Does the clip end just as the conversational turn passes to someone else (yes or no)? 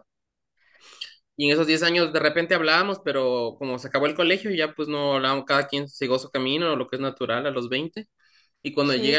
no